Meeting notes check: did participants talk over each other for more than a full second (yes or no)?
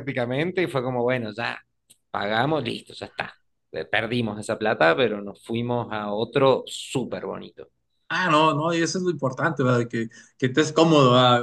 no